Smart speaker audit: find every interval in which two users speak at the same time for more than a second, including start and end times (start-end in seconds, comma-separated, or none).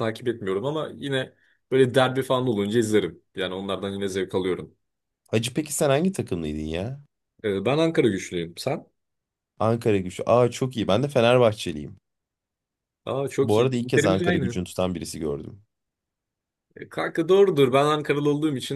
13.4-14.6